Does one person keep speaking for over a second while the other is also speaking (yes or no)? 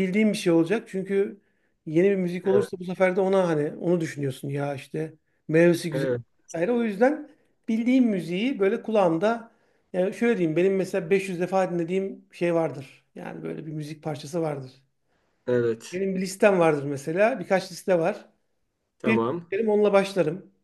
no